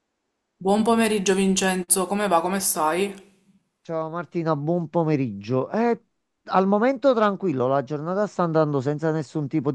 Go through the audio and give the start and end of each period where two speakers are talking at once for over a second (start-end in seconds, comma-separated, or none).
none